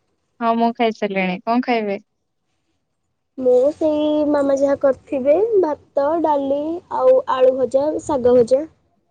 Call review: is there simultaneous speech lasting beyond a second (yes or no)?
no